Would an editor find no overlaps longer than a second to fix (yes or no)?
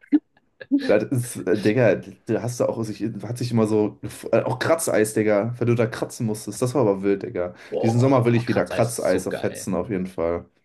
no